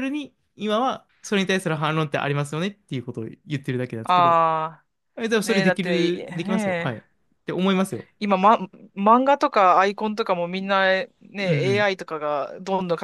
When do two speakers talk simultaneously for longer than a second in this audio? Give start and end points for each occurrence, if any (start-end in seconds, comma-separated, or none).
5.4-7.0